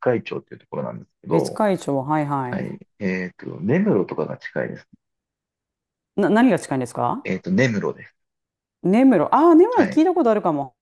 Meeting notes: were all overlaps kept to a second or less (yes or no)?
yes